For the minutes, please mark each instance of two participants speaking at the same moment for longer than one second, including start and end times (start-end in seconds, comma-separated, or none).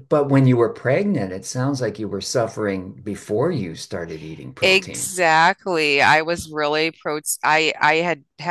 none